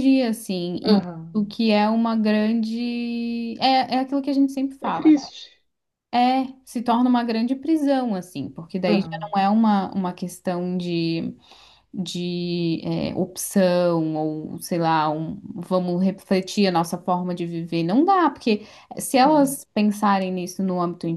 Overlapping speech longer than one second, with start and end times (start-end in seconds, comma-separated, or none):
none